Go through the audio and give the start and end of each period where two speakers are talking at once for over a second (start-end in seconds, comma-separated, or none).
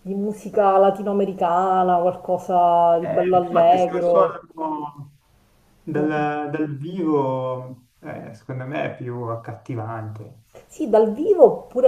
3.0-4.4